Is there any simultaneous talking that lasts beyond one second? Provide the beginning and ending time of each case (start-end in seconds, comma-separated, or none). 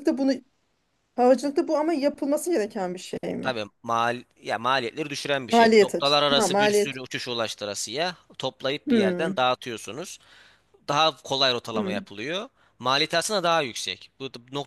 5.5-7.0